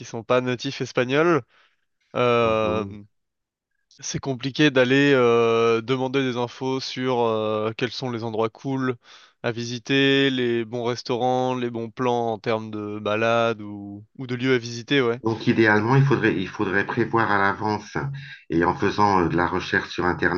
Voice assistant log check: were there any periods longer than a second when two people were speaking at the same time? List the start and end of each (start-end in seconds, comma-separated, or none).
none